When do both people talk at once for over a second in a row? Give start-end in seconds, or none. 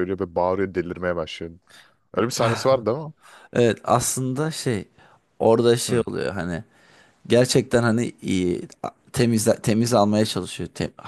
none